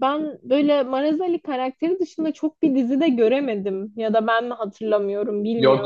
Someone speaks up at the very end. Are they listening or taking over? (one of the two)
taking over